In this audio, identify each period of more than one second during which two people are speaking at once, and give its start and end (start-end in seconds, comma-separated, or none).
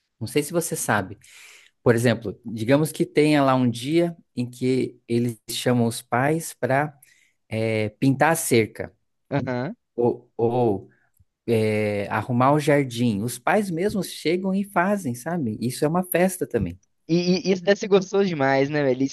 none